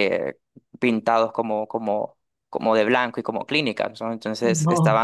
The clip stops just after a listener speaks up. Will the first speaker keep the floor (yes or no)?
yes